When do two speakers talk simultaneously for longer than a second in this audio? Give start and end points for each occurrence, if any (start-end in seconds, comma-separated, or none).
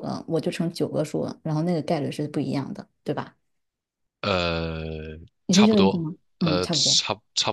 5.5-7.0